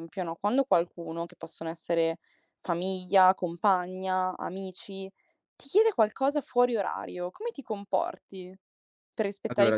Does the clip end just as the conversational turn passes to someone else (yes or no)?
no